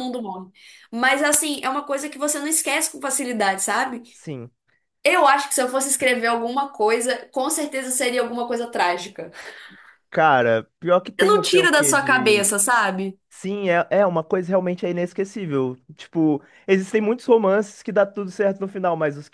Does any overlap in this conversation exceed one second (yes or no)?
yes